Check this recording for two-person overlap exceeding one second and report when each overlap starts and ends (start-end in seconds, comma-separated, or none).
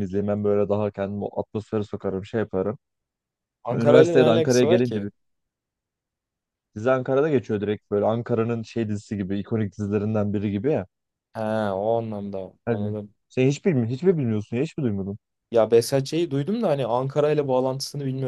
3.7-5.1